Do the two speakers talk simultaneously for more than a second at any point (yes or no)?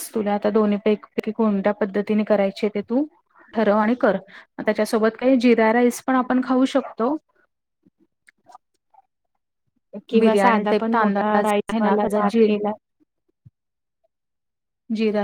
yes